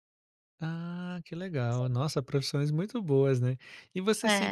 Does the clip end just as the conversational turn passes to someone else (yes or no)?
no